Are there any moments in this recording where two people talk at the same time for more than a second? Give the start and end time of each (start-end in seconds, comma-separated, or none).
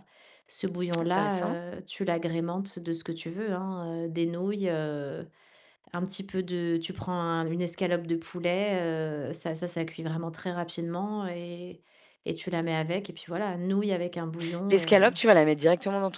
none